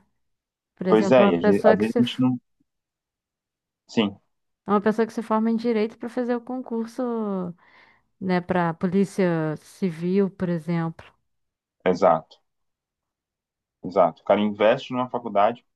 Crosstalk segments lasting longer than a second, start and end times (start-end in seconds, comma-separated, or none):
0.9-2.2